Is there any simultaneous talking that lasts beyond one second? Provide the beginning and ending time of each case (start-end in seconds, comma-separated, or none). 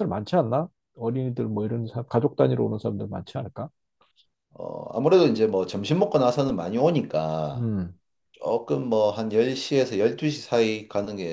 none